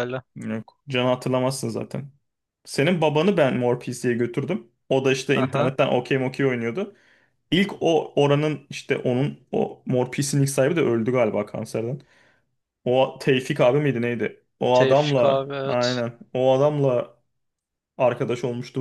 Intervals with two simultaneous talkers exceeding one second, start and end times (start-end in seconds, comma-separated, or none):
14.7-16.0